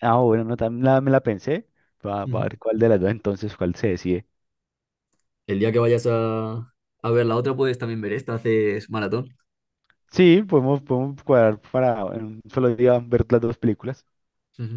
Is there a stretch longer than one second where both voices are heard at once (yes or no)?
no